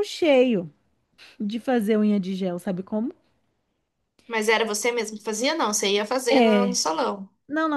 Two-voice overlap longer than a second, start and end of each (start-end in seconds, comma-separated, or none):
none